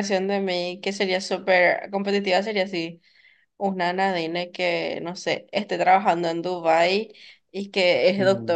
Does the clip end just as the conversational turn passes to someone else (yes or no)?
no